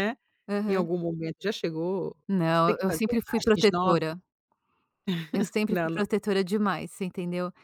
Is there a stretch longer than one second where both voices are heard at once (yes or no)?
yes